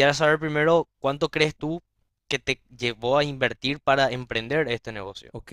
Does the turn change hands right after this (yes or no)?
yes